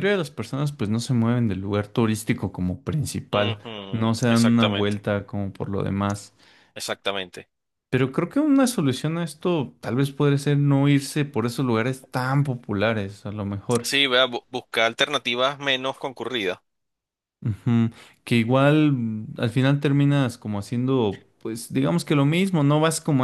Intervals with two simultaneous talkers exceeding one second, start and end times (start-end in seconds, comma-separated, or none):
3.3-5.0